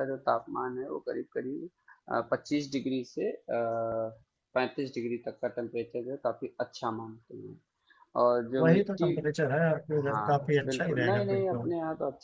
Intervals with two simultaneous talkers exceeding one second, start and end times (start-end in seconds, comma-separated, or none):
9.9-11.6